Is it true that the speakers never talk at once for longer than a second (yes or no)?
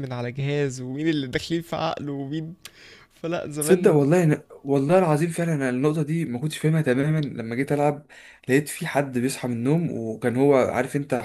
yes